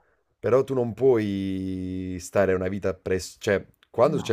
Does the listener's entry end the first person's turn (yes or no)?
no